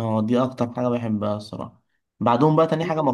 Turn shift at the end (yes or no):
no